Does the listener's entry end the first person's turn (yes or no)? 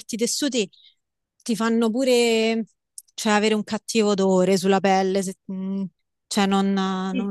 yes